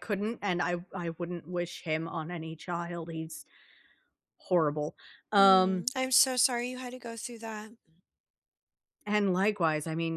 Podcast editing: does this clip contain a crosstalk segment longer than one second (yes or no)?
no